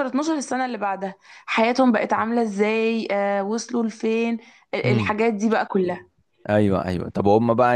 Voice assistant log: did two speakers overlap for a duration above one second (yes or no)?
no